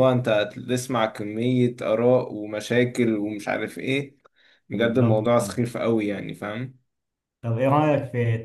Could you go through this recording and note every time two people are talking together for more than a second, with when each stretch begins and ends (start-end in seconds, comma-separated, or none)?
none